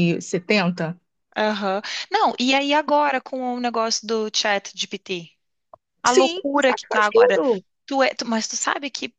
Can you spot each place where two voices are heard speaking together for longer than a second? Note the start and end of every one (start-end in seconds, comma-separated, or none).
6.0-7.4